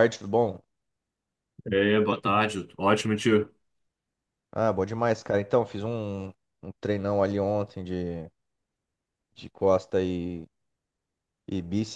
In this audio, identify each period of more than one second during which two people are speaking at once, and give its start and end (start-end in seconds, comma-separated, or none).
none